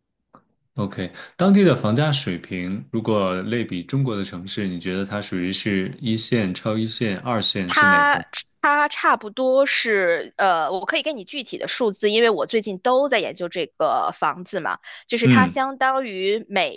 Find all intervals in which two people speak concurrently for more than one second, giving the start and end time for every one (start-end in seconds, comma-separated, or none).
none